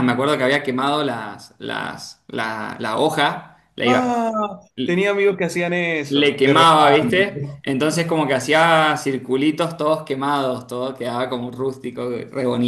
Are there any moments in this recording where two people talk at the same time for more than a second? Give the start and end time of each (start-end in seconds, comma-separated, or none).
6.1-7.6